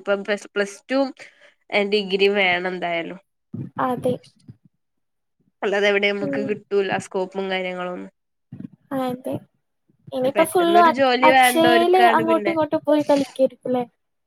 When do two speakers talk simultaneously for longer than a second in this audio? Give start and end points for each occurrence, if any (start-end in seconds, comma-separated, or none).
10.3-12.5